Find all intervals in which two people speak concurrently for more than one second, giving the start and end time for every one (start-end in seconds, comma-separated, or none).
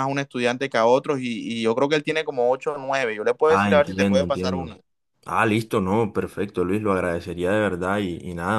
3.5-4.8